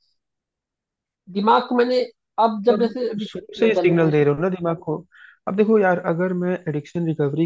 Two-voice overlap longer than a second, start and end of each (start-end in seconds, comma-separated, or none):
2.7-4.1